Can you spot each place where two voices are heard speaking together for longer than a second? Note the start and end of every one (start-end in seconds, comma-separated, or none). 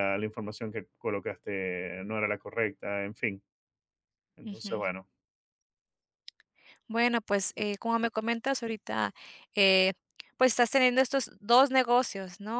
none